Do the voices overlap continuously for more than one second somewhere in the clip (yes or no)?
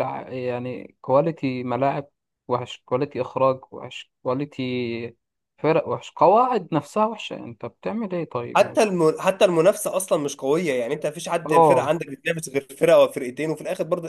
no